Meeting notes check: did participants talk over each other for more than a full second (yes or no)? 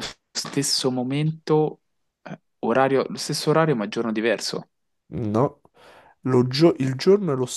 no